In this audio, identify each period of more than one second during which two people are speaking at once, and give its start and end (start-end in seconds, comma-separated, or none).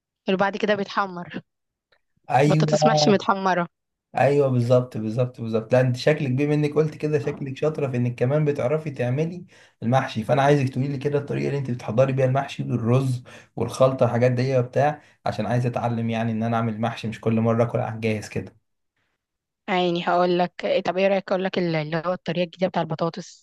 none